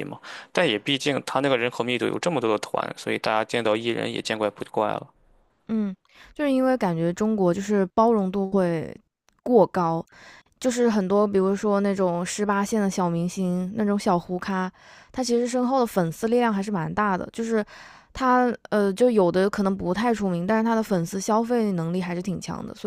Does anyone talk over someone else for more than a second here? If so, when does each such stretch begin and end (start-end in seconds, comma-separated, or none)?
none